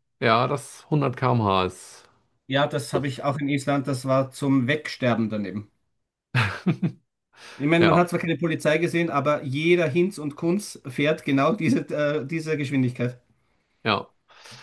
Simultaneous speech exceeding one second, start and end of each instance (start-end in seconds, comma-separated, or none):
none